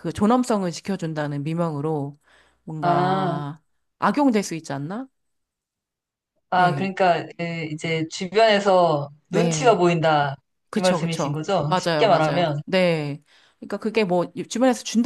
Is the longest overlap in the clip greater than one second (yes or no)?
yes